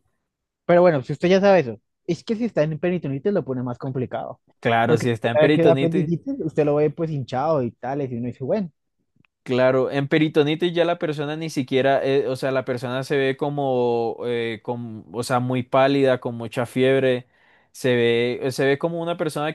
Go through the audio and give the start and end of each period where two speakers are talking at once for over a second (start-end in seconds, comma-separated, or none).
4.8-6.1